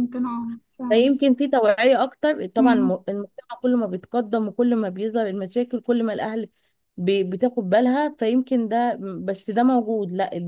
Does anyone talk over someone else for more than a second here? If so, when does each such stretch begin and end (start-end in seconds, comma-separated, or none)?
none